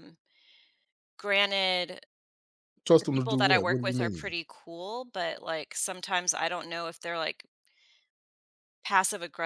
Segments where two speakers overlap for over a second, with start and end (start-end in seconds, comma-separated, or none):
3.0-4.3